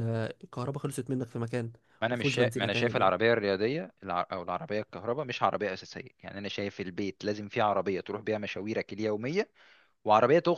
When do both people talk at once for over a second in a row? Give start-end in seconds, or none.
2.1-3.3